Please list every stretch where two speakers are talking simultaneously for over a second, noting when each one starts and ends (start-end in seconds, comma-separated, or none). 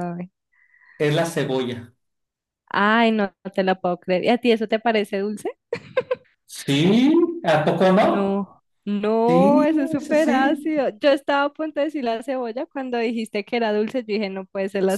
9.2-10.7